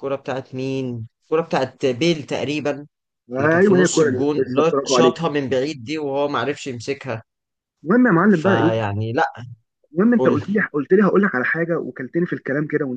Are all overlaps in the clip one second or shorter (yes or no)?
no